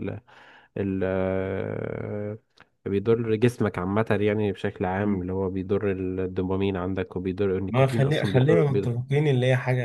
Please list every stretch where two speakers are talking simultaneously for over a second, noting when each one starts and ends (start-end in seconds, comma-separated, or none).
7.7-8.9